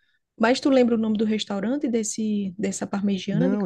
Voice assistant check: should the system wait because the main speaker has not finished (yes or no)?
no